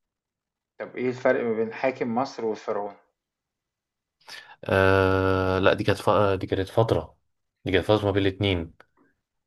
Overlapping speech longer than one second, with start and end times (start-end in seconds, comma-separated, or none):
none